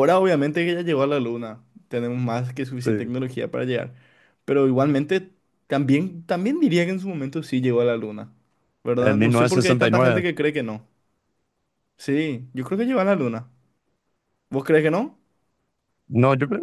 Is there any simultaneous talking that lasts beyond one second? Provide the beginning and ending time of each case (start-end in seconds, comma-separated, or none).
9.0-10.2